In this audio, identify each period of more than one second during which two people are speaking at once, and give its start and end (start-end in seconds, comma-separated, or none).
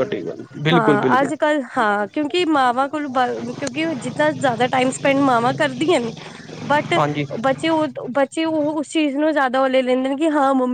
none